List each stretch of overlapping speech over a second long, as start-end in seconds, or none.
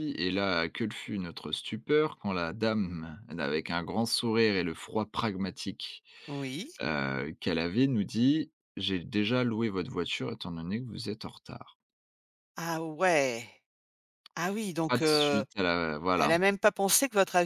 none